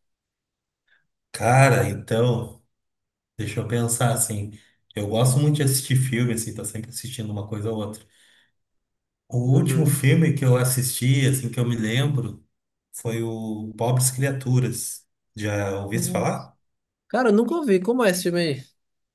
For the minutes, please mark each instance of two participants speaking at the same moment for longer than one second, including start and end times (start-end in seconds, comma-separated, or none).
none